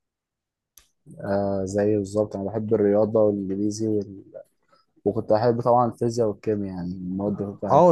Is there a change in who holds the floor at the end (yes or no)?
yes